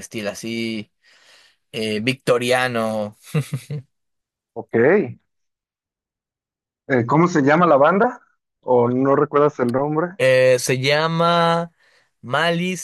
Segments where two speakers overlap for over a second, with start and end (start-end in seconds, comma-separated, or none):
none